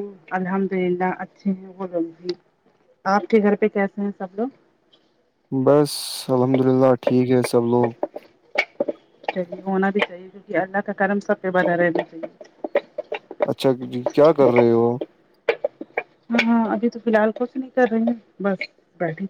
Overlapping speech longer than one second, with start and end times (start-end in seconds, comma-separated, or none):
none